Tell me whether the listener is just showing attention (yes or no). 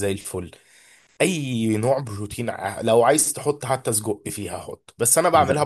yes